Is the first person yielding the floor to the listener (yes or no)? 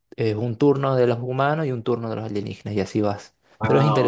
yes